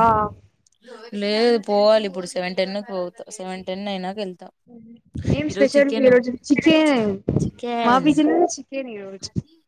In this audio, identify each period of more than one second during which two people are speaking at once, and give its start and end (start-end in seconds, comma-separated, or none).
none